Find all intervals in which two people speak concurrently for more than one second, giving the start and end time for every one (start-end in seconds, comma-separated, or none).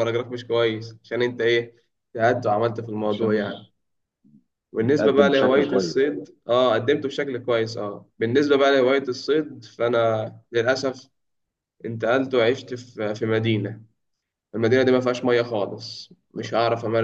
4.8-6.1